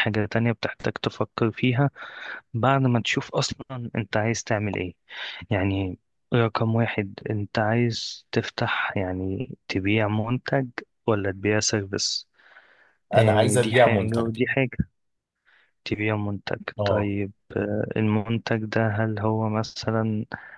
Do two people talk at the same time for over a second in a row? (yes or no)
yes